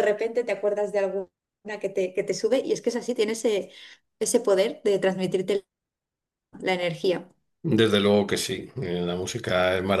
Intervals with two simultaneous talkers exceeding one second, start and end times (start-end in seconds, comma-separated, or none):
none